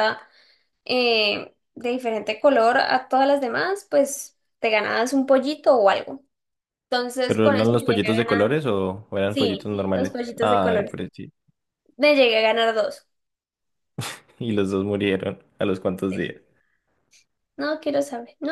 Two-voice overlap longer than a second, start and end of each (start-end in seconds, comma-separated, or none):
7.3-8.6, 9.3-11.0